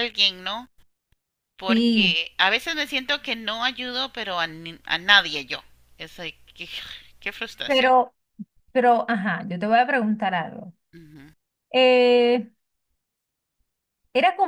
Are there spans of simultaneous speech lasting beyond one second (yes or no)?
no